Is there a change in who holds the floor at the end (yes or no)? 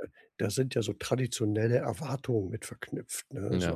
no